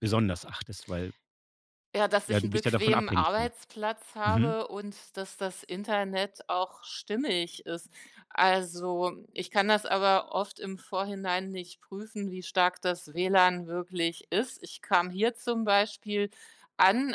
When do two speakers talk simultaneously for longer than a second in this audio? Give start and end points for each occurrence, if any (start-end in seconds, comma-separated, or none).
2.3-3.5